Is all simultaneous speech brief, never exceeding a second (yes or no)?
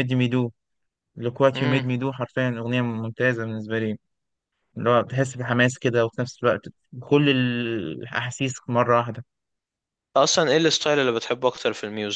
yes